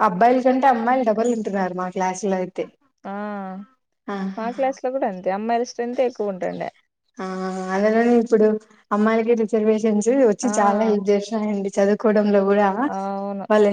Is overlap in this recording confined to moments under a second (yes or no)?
yes